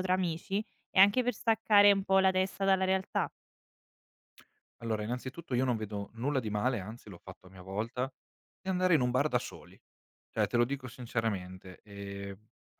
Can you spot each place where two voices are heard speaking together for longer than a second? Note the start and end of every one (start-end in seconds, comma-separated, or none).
none